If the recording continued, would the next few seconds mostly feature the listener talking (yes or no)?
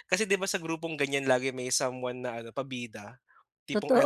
no